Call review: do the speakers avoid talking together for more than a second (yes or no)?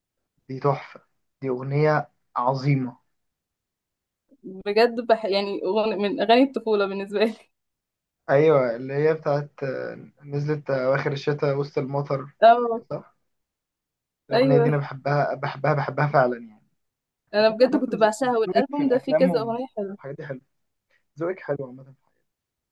no